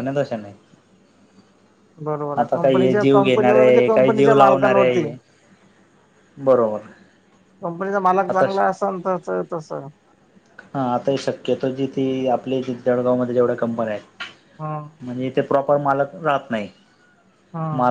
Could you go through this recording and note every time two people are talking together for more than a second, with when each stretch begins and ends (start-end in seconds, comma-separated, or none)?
2.4-5.0